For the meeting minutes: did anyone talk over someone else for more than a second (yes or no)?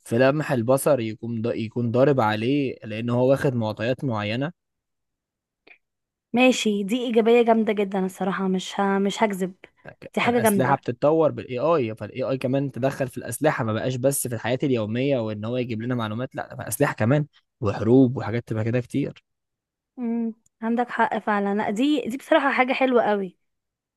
no